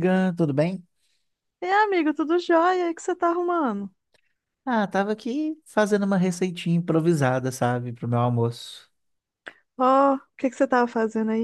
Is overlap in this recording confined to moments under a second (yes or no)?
yes